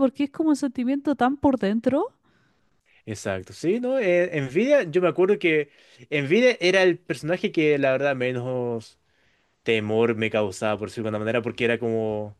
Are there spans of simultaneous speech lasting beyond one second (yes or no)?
no